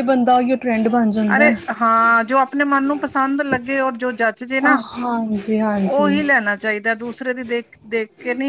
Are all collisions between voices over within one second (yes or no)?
yes